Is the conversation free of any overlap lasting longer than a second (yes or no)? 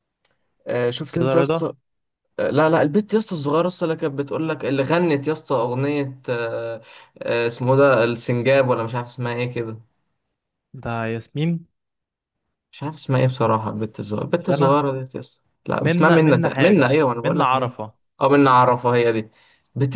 no